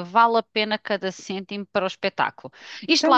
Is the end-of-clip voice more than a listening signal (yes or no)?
yes